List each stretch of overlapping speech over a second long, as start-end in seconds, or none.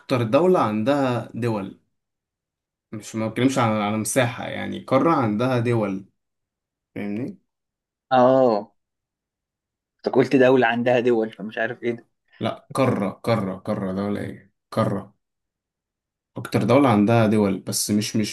none